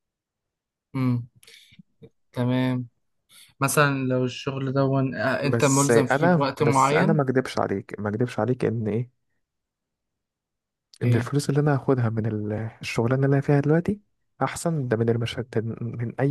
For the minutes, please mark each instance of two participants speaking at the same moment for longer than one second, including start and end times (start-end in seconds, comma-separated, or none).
5.4-7.2